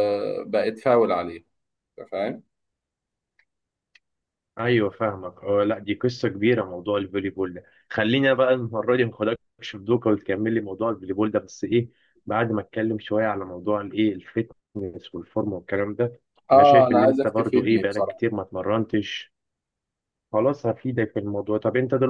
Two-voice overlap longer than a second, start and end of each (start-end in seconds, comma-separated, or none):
16.5-18.2